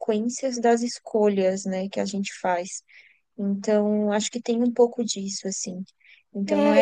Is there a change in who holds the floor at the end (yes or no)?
yes